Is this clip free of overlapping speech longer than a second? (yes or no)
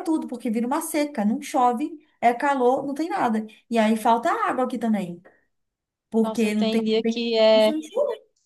no